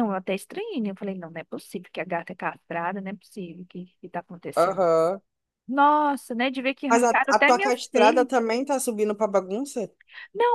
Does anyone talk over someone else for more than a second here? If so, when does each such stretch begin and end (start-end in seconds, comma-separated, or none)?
6.9-8.3